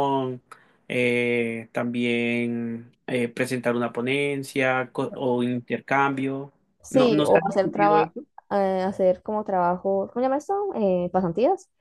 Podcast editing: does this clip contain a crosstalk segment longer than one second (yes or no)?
yes